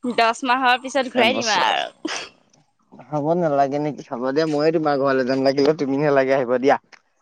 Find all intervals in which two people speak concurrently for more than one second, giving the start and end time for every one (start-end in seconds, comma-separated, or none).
none